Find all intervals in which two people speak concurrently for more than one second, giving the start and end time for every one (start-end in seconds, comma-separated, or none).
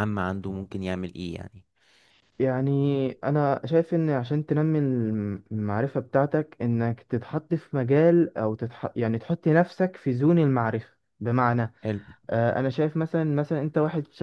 none